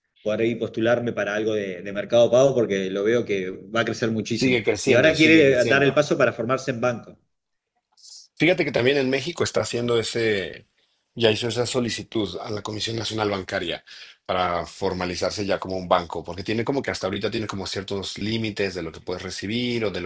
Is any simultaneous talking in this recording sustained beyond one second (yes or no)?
yes